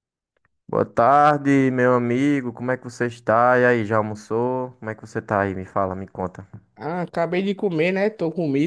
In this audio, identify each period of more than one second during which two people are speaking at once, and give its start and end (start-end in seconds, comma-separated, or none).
none